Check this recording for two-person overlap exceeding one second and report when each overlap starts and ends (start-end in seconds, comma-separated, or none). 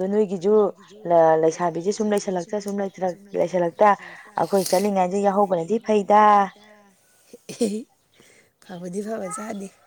none